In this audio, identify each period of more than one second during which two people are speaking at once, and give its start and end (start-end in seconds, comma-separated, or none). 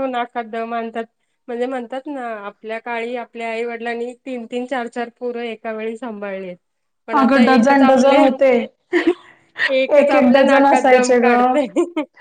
10.0-11.3